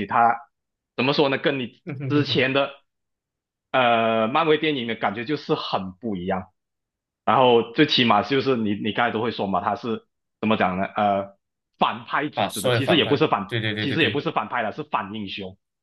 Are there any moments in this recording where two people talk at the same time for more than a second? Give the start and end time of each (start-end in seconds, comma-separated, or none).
12.3-14.2